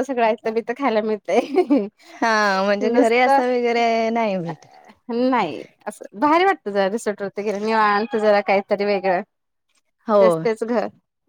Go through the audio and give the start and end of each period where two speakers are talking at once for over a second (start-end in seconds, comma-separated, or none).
none